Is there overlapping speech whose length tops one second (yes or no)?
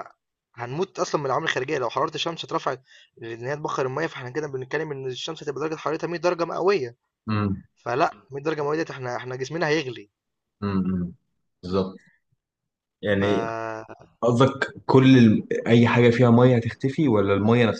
no